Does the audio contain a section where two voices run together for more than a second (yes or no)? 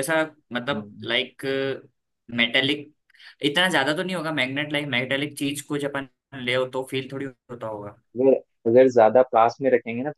no